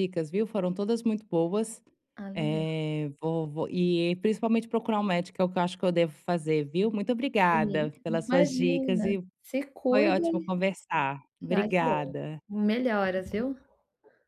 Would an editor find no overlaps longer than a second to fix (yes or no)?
no